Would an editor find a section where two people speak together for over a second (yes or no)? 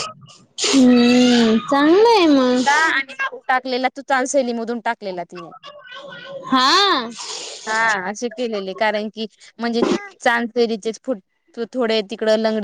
no